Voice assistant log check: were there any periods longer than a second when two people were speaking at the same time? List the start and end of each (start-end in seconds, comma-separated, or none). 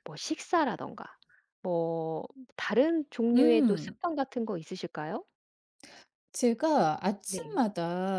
none